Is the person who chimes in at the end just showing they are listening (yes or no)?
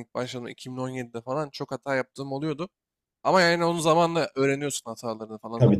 yes